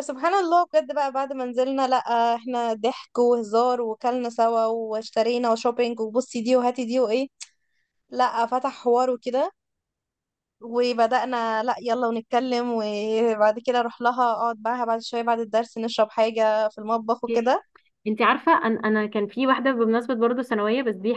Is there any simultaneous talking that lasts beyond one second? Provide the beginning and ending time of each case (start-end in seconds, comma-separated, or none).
none